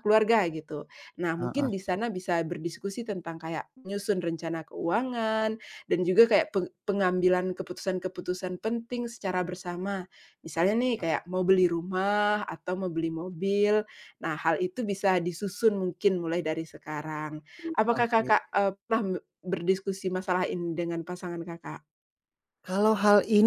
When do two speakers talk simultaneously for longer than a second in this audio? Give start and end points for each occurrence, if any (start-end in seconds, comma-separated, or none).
none